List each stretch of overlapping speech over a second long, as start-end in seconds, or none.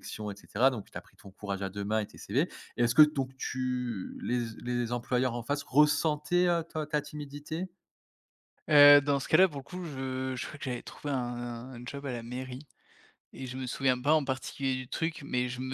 none